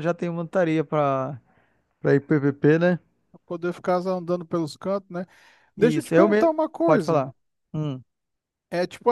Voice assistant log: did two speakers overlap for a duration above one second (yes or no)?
yes